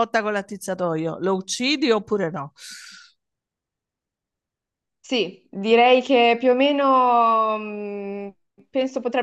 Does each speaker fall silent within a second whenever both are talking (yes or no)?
yes